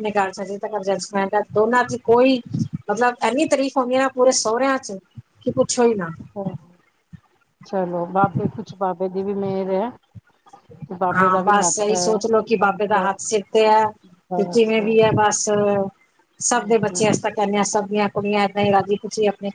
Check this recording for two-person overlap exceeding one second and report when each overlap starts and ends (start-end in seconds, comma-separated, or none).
none